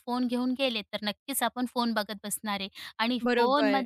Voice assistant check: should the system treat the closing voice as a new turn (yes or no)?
no